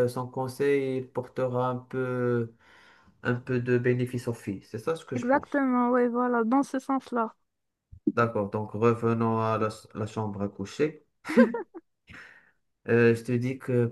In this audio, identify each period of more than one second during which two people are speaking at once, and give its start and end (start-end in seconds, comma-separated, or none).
none